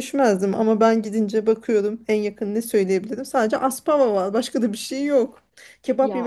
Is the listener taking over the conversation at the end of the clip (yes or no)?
no